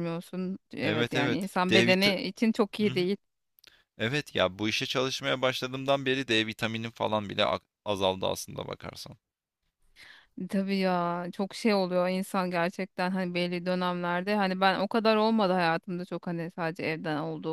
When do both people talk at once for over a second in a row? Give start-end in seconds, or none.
0.8-2.0